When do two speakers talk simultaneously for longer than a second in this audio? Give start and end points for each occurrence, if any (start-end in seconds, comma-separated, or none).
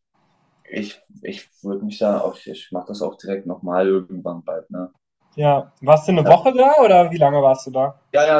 none